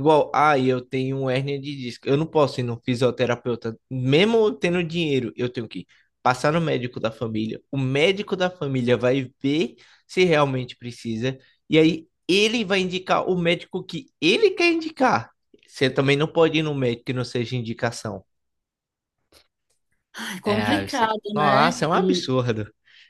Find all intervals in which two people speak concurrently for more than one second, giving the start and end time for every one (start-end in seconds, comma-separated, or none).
20.4-22.3